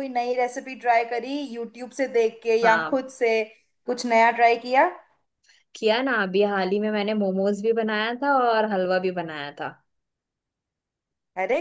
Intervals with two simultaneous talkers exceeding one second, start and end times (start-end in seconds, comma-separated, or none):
none